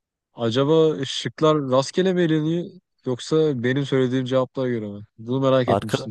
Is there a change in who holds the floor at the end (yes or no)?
yes